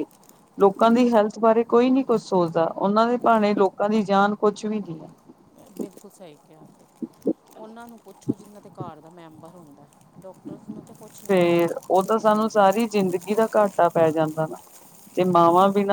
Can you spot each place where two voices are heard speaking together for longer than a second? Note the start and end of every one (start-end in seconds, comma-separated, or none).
11.3-12.9